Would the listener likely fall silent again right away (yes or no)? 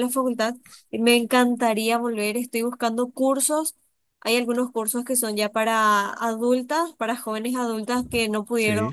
yes